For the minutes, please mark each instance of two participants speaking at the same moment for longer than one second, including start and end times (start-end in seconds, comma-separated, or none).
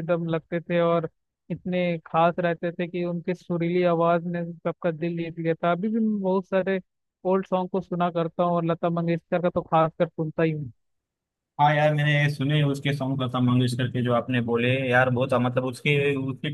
none